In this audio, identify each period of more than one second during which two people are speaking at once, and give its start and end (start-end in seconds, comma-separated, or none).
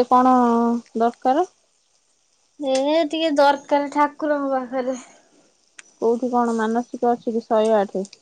none